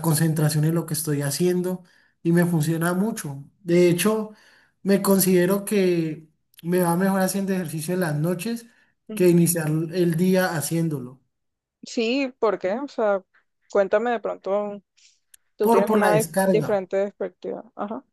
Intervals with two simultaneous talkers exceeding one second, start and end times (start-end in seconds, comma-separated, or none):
15.6-16.9